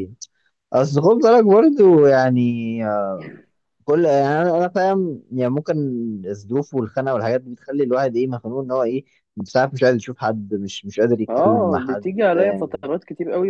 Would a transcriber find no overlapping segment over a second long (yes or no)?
no